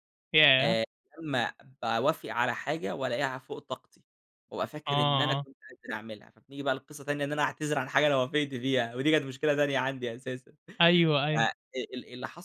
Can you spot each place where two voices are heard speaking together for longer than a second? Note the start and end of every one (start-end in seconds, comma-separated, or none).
none